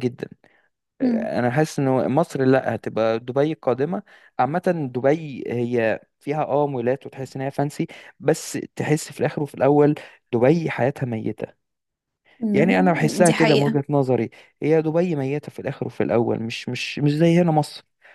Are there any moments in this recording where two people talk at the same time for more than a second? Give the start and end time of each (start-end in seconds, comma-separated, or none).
12.5-13.8